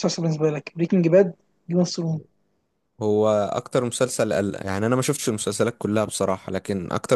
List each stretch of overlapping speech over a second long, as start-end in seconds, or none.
none